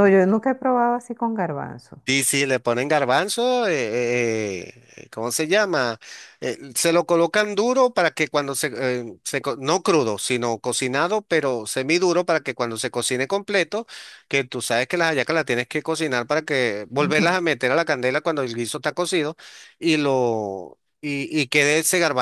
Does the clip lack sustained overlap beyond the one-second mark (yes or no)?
yes